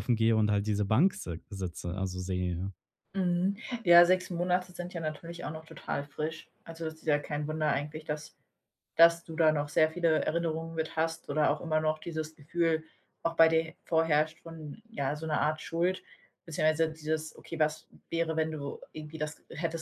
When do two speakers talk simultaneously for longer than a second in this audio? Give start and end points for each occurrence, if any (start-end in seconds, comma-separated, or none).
none